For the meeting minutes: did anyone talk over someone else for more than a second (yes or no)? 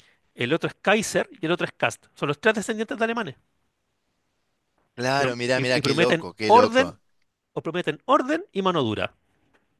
yes